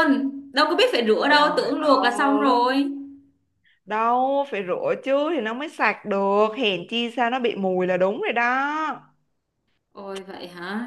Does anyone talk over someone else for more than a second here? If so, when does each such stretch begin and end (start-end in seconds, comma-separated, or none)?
1.3-2.6